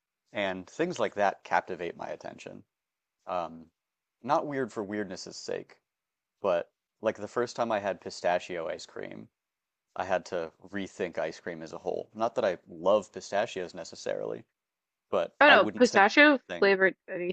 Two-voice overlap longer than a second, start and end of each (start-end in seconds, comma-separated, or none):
15.4-16.8